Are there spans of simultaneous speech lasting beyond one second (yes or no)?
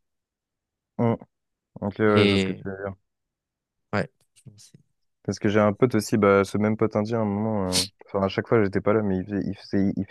no